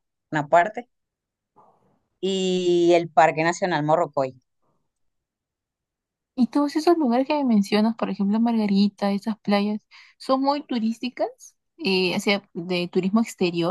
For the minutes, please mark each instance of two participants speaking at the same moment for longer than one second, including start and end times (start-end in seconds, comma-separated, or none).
none